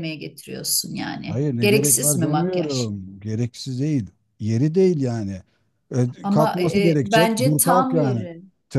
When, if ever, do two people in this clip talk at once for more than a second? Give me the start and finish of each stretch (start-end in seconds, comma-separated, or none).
1.3-2.9, 6.2-8.3